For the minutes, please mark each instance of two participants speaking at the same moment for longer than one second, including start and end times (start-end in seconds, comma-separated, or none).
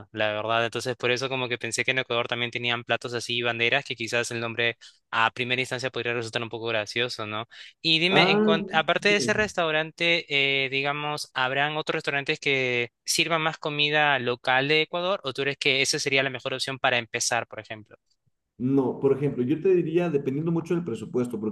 8.1-9.5